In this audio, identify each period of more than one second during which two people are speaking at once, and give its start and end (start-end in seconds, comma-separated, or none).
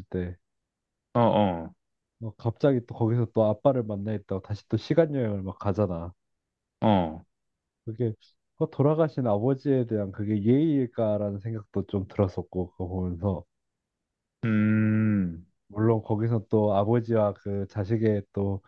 none